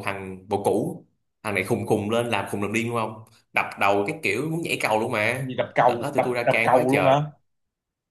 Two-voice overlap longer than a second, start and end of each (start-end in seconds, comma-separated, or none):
5.4-7.2